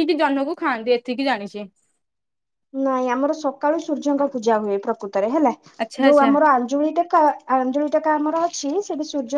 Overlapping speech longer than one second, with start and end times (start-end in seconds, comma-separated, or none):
none